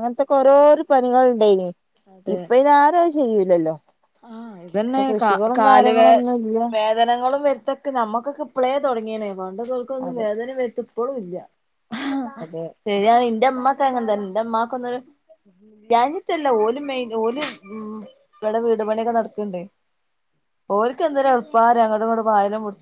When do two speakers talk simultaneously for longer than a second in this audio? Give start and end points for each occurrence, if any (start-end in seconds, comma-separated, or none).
none